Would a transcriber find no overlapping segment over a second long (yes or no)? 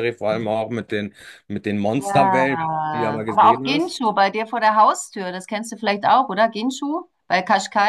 no